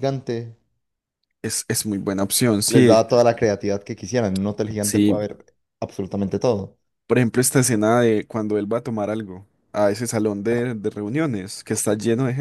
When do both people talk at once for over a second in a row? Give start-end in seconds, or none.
none